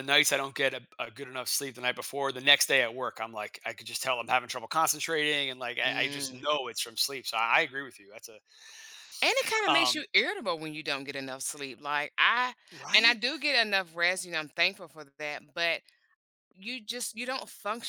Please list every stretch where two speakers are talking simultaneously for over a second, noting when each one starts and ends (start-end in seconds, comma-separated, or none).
none